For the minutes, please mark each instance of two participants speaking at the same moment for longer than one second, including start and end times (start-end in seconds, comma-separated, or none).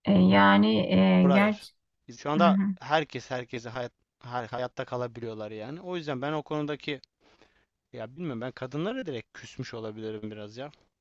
none